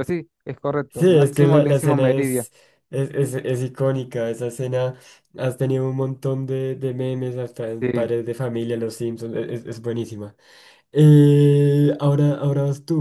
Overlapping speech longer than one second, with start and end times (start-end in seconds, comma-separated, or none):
0.9-2.5